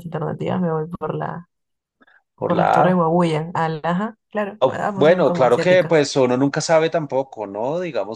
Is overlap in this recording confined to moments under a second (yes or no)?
no